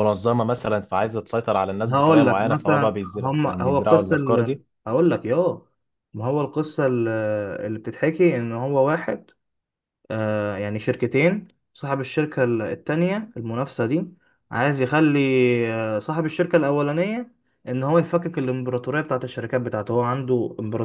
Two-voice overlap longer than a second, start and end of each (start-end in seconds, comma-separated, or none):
1.9-4.7